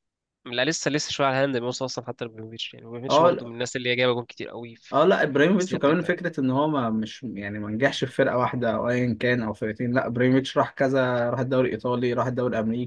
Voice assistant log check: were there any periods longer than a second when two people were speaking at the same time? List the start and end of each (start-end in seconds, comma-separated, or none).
4.9-6.2